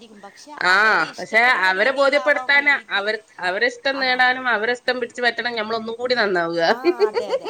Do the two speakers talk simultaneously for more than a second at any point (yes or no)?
yes